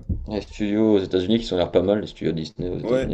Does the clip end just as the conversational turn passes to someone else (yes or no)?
yes